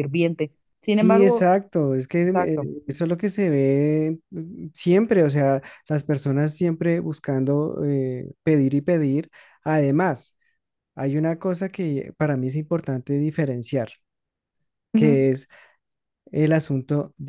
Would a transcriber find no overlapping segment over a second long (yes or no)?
yes